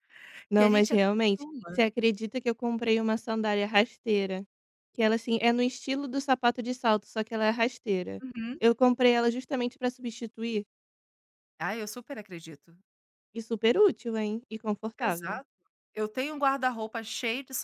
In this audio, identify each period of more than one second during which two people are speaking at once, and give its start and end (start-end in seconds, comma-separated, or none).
0.6-1.9